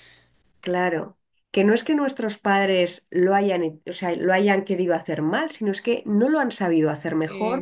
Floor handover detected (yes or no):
no